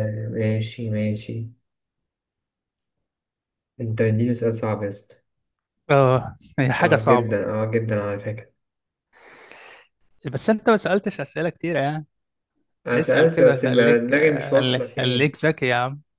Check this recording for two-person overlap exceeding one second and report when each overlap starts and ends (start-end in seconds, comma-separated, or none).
12.9-15.4